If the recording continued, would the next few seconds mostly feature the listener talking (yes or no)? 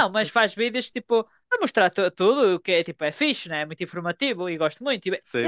yes